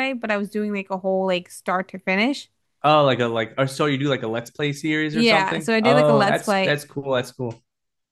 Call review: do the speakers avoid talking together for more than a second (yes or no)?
no